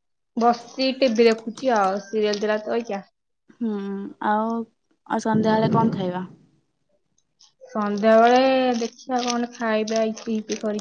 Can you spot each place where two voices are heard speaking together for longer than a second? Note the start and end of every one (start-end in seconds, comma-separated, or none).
none